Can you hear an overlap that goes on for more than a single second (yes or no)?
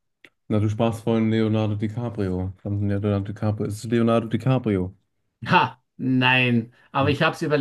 no